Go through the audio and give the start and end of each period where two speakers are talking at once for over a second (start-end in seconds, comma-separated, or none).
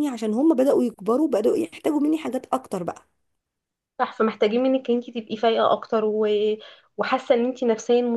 none